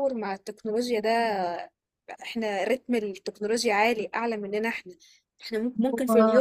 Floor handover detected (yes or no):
no